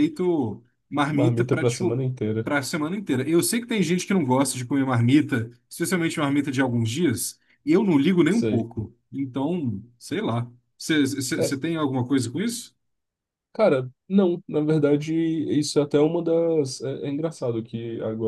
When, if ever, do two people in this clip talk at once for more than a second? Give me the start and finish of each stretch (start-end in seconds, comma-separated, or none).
1.1-2.5